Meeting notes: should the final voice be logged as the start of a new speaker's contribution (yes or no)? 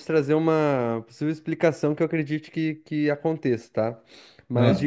no